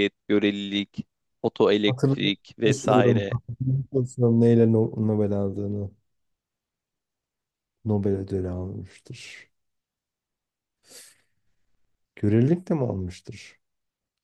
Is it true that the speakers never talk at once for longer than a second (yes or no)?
no